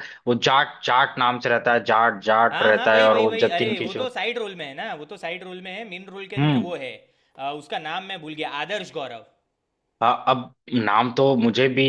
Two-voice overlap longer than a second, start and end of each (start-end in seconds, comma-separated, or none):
2.5-4.1